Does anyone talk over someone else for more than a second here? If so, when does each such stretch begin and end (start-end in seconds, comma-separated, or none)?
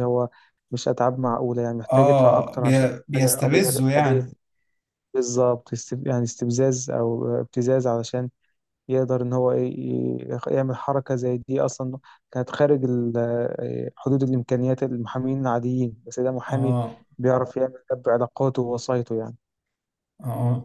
1.9-4.3